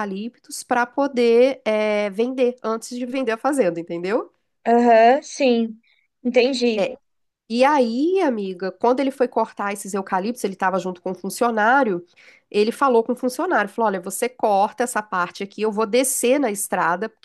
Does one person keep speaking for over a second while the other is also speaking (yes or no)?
no